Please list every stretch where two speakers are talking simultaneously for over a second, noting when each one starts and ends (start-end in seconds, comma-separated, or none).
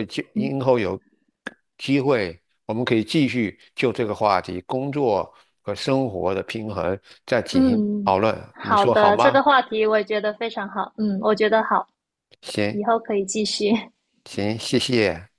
7.5-9.4